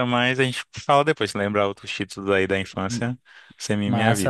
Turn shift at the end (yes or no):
yes